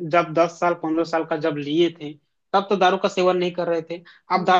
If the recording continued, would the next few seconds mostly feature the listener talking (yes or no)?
no